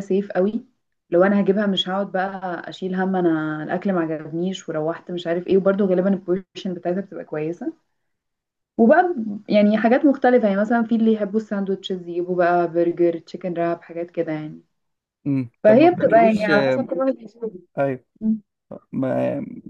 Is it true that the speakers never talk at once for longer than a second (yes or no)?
no